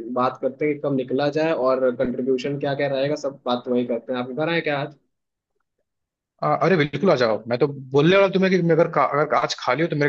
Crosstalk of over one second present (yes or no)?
no